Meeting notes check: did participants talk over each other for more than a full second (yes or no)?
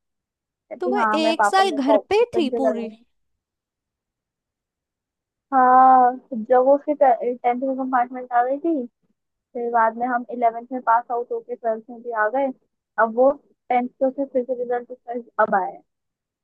yes